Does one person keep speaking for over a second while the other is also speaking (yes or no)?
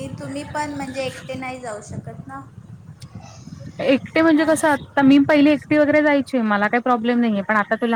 no